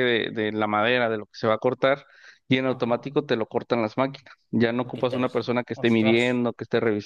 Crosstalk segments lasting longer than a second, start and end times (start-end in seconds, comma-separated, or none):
4.8-6.4